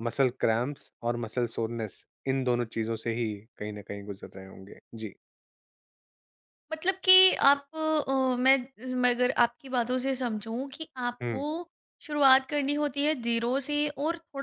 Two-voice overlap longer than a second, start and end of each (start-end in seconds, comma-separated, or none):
none